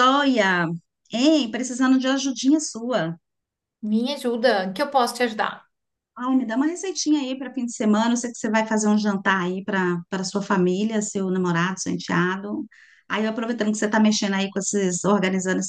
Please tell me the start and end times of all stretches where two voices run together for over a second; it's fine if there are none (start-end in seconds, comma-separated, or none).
none